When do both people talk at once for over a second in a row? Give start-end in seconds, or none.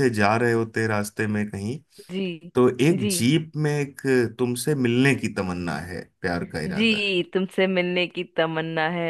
none